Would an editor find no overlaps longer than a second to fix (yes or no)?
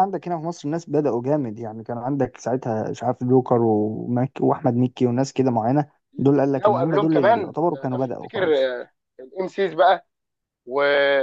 no